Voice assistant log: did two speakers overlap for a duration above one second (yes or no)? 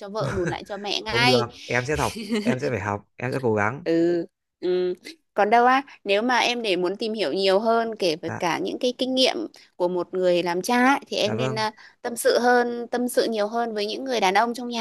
no